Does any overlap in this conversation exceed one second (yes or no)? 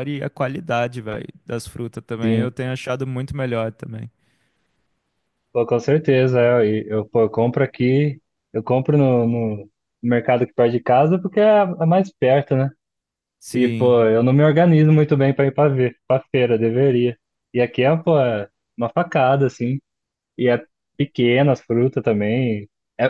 no